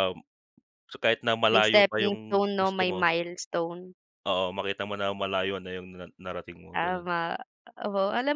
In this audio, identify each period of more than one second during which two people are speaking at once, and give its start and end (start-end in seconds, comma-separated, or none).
1.5-3.0